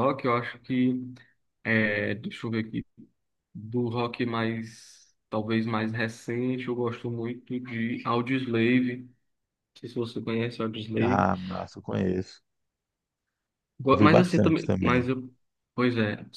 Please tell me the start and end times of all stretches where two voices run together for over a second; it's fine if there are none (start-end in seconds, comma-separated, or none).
13.9-15.1